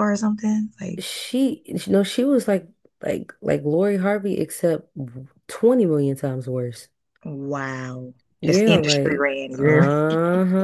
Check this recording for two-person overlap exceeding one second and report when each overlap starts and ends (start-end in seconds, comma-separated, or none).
8.4-9.9